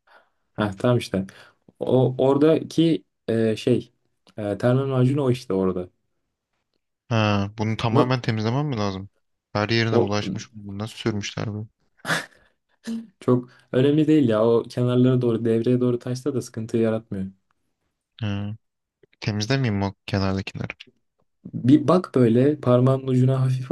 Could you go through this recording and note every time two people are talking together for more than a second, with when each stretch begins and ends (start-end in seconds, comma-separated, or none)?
none